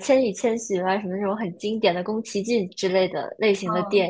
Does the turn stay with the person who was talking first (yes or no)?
no